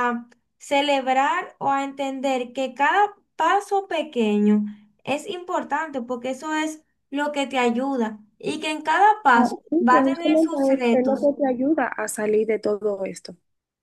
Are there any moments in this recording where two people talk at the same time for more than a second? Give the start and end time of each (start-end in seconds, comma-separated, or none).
9.3-11.3